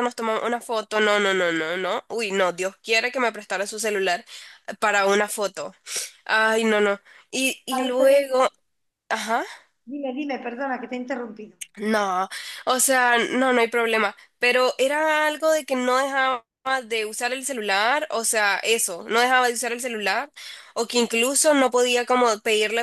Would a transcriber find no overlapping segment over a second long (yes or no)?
yes